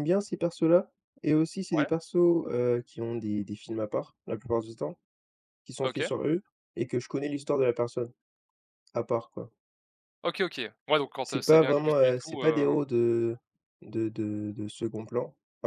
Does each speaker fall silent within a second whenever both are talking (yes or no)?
no